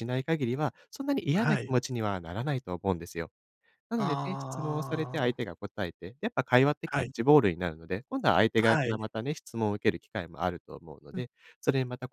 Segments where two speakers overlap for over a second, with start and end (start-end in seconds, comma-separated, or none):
4.0-5.5